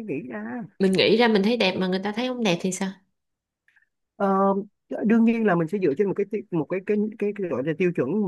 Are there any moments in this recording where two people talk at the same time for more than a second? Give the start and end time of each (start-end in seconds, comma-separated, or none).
none